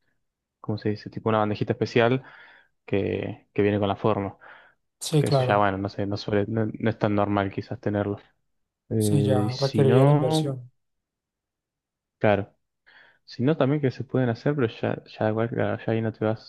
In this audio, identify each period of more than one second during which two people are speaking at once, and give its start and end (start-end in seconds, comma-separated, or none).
9.0-10.6